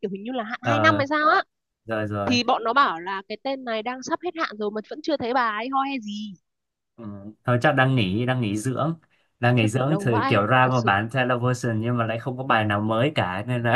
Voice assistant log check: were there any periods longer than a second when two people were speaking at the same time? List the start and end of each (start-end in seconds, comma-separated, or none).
9.6-11.0